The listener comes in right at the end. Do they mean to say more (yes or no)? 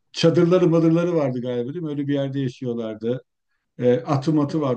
no